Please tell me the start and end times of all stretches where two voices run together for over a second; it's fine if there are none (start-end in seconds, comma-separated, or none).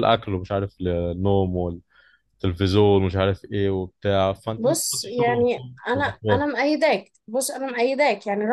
4.6-6.4